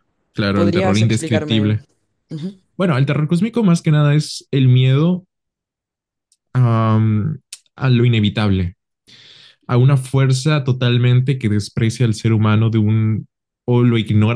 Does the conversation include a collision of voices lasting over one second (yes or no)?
yes